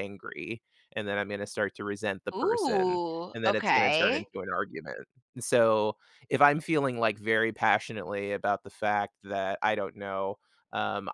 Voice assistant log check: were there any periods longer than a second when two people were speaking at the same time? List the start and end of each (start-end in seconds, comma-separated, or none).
2.3-4.3